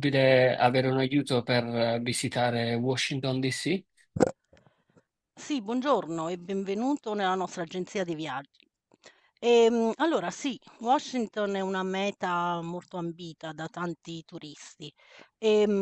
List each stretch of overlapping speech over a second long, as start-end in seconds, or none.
none